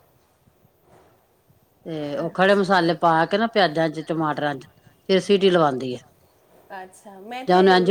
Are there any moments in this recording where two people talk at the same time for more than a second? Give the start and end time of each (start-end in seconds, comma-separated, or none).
none